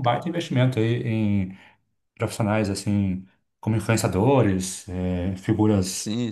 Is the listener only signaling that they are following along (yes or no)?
no